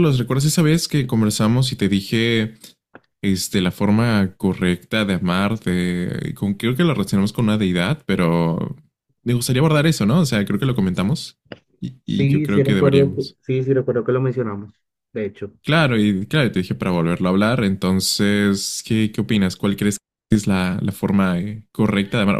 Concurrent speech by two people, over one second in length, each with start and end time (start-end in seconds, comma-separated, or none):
12.1-13.4